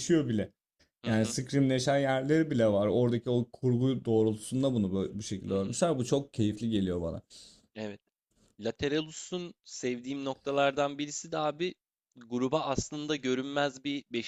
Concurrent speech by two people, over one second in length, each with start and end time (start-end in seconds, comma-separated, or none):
none